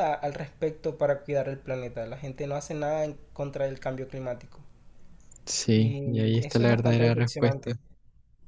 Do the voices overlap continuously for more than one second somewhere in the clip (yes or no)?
yes